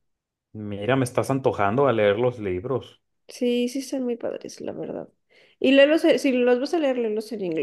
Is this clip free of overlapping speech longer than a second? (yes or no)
yes